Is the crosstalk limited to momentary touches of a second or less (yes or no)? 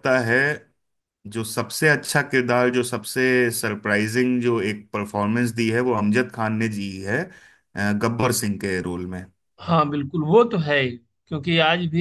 yes